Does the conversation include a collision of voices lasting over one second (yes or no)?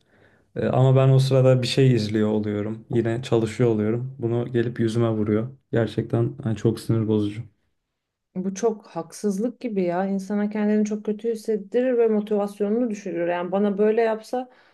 no